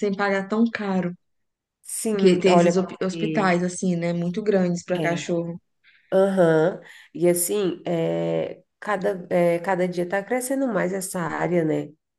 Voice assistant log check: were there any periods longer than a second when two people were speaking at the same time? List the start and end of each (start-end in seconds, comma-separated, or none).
2.1-3.5